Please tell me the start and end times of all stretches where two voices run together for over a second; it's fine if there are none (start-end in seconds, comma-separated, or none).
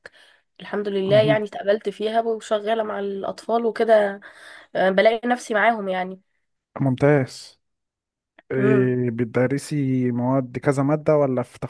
none